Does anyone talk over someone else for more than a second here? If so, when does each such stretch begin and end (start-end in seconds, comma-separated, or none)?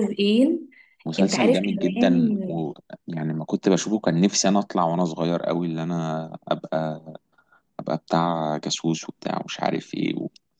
1.2-2.5